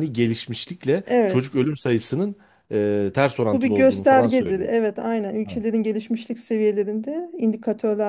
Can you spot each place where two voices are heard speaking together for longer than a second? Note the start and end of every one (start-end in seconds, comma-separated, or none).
3.5-4.7